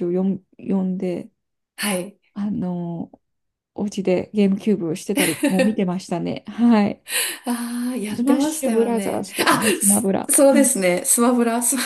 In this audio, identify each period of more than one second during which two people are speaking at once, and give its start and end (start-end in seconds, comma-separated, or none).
8.1-10.7